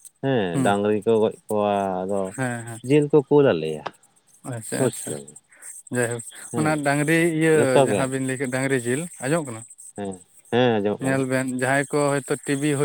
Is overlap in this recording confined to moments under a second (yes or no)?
yes